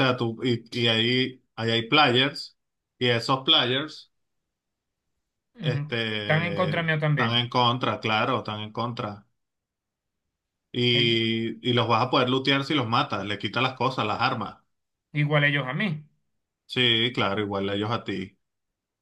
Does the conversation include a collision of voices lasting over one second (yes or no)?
yes